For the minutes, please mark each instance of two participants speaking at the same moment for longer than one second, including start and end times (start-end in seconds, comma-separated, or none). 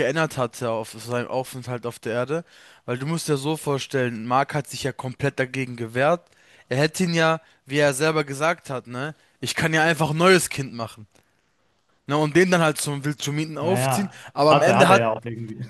13.6-15.1